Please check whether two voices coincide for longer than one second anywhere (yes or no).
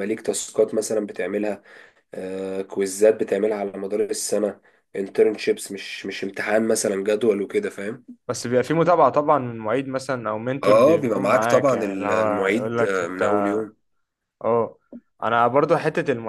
yes